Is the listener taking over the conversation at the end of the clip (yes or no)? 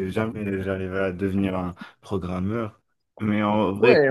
yes